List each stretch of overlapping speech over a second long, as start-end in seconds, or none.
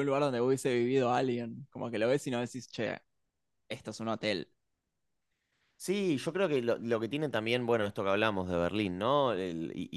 none